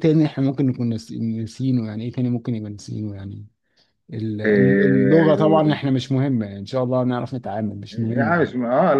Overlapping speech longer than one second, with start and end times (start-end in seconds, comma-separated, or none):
4.4-5.8